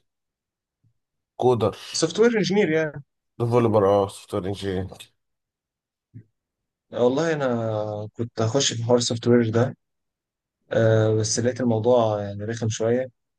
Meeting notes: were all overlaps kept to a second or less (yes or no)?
yes